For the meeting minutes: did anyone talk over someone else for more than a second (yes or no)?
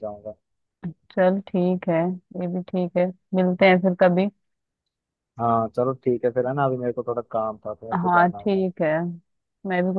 no